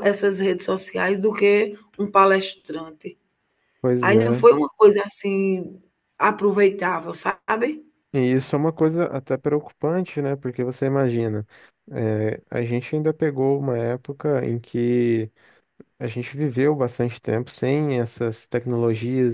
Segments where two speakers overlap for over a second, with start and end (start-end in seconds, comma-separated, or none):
none